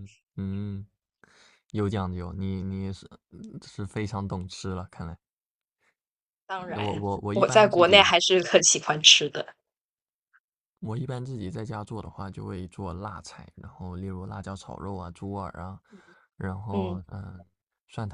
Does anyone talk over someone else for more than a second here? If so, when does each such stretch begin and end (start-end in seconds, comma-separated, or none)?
6.7-8.1